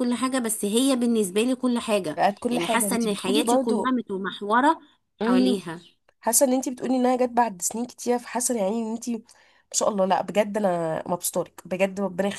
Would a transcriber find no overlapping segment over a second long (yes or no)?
no